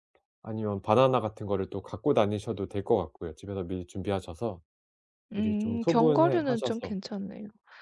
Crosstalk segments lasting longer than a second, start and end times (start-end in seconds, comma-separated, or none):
5.3-6.9